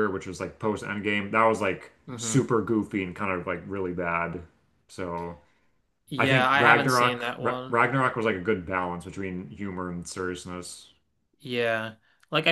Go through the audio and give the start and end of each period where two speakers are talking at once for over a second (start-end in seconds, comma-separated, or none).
6.2-7.8